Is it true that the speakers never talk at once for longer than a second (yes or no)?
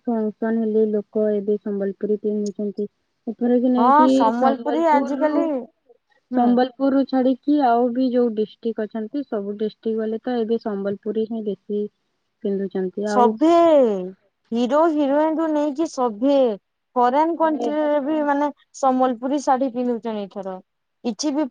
no